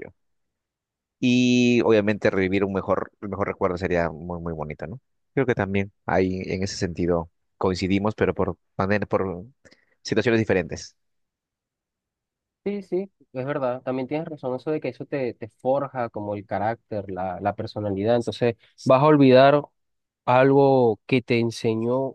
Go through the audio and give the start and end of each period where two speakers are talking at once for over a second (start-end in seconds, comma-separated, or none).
none